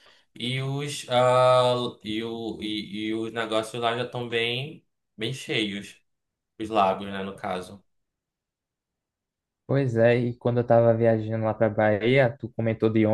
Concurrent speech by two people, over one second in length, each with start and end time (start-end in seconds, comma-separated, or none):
none